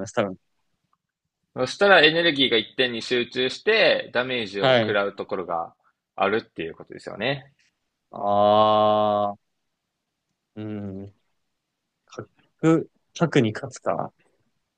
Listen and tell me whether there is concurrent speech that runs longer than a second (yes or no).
no